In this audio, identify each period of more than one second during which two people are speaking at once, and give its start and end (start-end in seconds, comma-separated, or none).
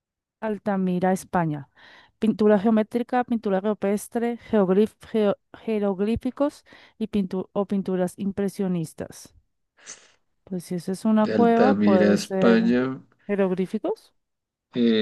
11.2-12.6